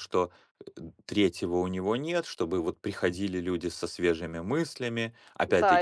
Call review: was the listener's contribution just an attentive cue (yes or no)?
no